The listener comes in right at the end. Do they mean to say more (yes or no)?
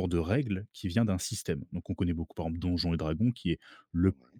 no